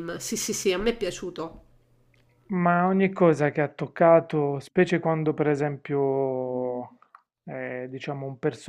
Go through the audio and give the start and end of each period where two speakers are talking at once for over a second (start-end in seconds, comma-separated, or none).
none